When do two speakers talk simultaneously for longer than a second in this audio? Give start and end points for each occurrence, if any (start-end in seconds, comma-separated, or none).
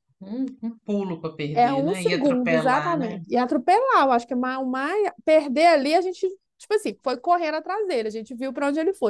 1.5-3.2